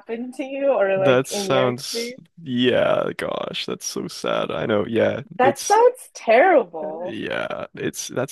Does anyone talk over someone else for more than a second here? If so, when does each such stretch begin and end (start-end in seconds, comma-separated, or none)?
0.9-2.2